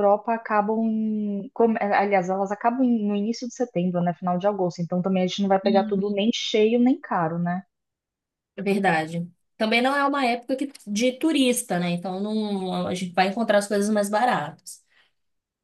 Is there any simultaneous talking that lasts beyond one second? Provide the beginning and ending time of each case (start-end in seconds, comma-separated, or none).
none